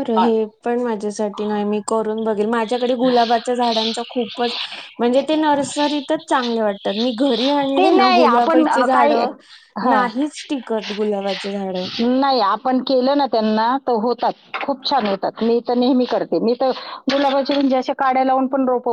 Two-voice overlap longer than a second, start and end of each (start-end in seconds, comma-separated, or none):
7.8-9.1